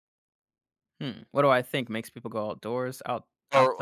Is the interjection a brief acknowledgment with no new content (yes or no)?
no